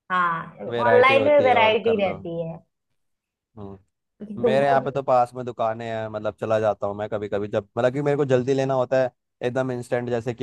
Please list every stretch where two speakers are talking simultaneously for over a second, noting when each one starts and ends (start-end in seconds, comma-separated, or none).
0.7-2.2